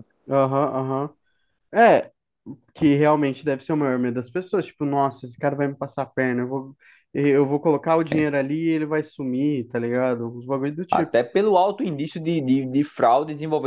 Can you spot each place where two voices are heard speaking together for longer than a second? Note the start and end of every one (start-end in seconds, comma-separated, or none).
none